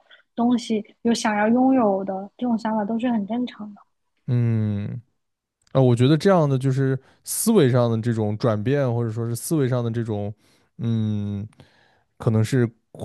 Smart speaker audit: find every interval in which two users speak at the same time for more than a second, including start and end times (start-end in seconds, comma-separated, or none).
none